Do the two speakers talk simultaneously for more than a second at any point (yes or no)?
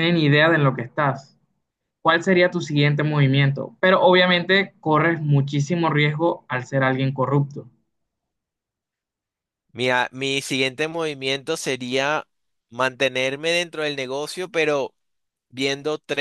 no